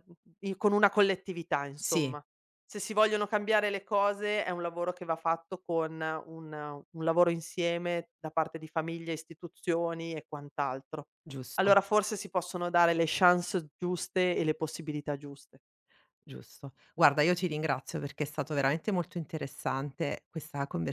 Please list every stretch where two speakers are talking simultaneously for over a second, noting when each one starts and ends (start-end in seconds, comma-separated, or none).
none